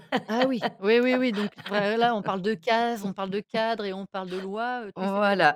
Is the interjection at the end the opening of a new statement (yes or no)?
yes